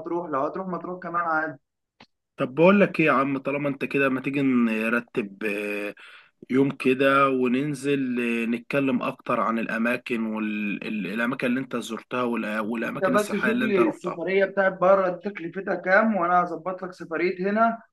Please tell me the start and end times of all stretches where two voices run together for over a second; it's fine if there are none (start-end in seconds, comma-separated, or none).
12.8-14.2